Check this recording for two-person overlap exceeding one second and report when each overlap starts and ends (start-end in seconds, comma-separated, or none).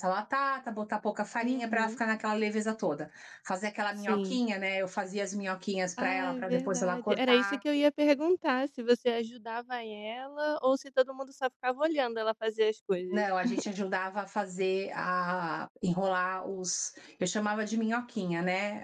6.0-7.7